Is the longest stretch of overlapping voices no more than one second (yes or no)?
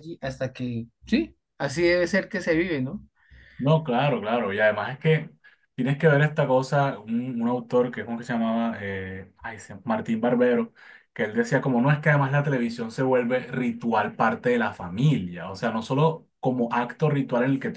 yes